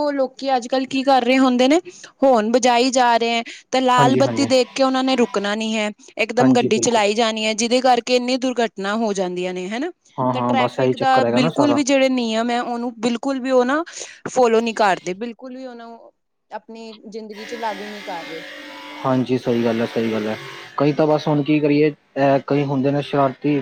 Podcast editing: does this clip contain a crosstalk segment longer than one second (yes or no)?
yes